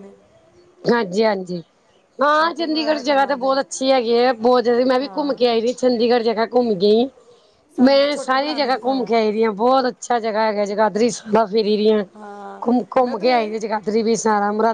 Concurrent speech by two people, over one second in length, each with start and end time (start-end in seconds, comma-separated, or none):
2.3-3.8, 7.9-9.1